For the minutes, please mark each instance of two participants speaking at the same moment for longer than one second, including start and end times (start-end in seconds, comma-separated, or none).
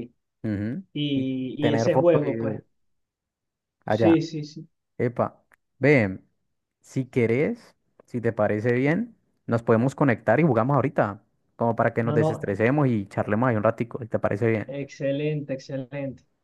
0.9-2.6